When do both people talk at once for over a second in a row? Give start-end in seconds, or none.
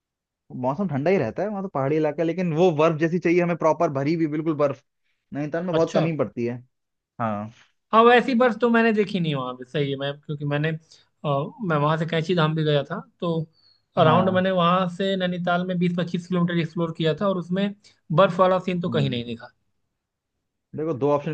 none